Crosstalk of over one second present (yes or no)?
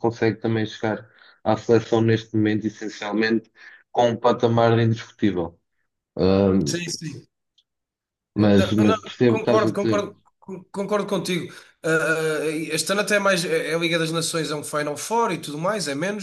yes